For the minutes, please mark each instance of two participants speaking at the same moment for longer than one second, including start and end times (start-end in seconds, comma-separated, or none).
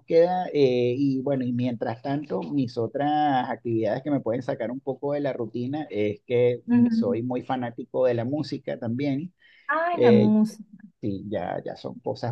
none